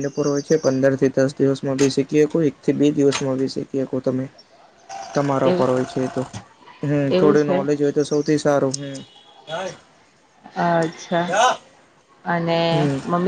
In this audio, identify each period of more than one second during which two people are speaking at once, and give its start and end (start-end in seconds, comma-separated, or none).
none